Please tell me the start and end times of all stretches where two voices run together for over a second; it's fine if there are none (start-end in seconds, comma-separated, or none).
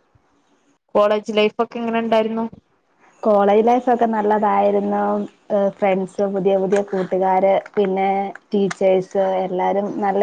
none